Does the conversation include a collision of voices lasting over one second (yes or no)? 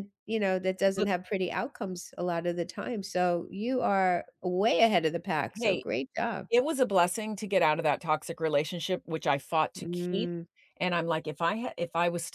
no